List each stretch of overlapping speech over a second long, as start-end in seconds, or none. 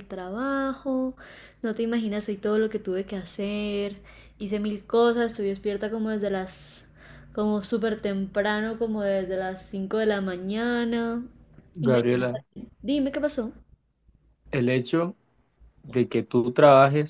none